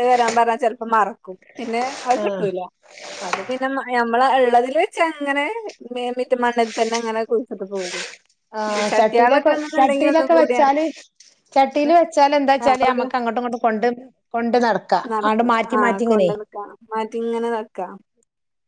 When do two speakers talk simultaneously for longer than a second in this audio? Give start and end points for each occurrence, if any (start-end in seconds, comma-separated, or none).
8.9-10.7